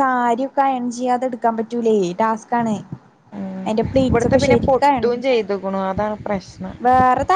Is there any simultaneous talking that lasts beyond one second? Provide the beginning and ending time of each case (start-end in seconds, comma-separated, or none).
4.1-5.5